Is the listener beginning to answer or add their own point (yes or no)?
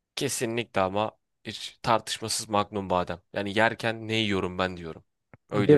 no